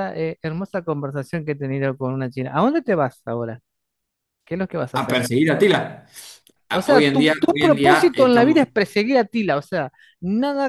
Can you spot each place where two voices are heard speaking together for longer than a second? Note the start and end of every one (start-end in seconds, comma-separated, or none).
6.7-8.7